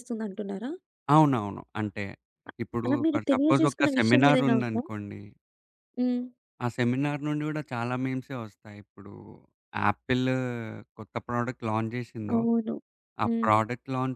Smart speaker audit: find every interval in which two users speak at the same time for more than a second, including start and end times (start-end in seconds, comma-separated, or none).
2.6-4.8